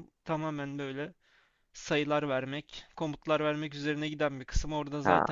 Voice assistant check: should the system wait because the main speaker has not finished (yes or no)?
yes